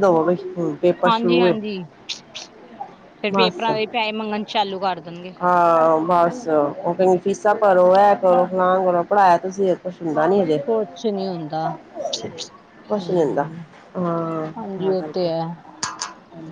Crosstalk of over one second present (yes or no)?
no